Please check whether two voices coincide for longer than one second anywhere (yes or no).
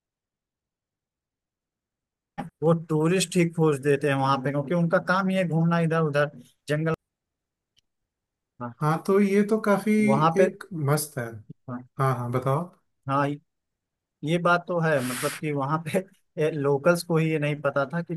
no